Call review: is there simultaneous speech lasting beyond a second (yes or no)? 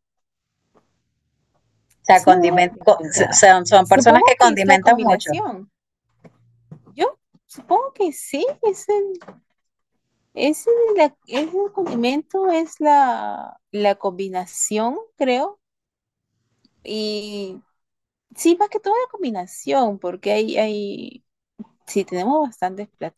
yes